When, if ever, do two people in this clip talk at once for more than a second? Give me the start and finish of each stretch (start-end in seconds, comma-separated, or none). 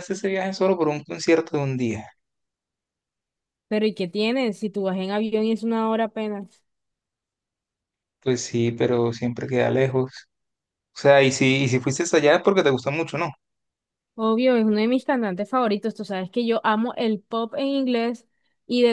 none